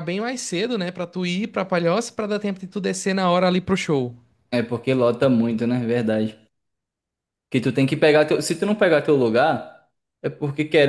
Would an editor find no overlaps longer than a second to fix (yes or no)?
yes